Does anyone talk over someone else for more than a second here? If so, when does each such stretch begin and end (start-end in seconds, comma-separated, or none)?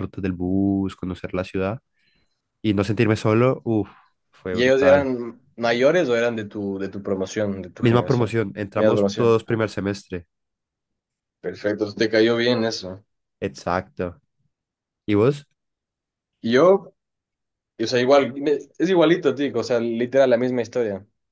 7.8-9.4